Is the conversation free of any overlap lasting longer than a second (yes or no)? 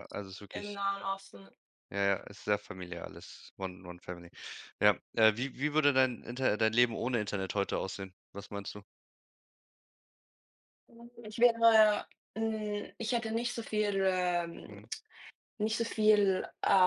yes